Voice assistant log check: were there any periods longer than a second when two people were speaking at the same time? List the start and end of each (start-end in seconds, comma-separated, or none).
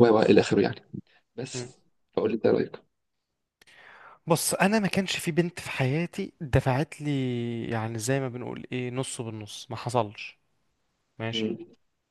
none